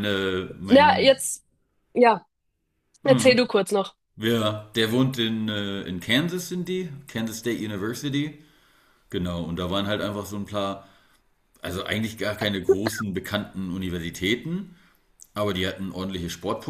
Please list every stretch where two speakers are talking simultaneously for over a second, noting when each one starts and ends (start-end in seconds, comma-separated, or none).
none